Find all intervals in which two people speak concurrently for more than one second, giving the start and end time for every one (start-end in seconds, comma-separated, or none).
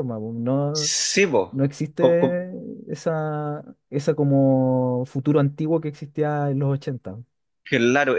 none